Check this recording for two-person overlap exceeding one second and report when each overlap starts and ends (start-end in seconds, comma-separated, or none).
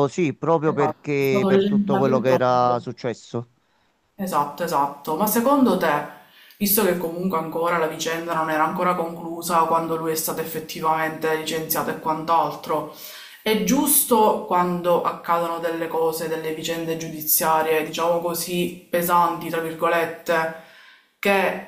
0.6-2.8